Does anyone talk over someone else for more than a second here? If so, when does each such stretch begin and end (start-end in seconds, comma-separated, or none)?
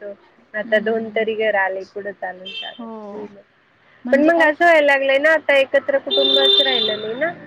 none